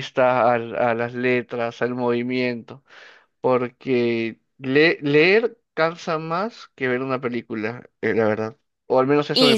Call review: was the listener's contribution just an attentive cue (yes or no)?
no